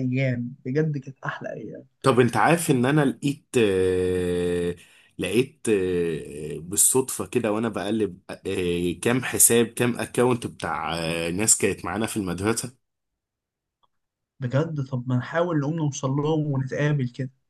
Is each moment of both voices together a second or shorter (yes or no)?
yes